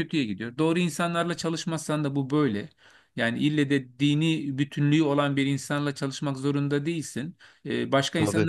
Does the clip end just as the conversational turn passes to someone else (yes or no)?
no